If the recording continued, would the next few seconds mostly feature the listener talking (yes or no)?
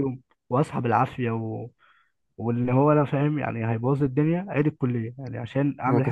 yes